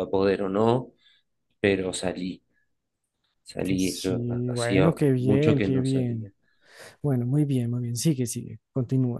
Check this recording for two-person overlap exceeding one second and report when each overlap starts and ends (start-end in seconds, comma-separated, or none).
3.8-6.3